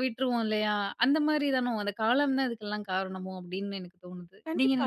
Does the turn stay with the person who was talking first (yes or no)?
no